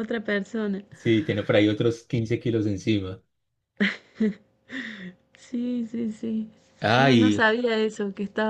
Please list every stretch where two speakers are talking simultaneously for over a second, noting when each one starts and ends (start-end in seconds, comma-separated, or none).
none